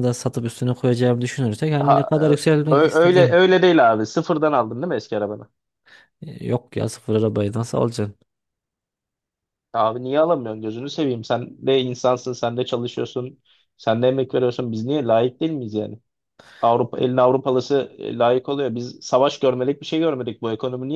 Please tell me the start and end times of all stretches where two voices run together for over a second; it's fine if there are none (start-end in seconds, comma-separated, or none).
1.8-3.4